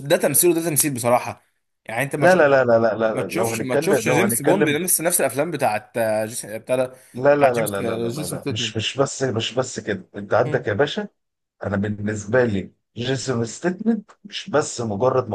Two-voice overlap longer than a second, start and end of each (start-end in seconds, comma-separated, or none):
3.1-4.8, 7.3-8.8